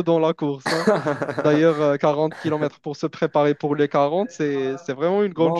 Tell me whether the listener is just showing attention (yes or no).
no